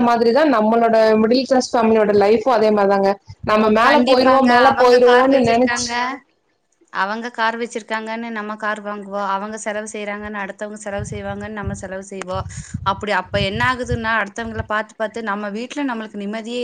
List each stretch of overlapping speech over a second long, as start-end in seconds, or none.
3.9-5.8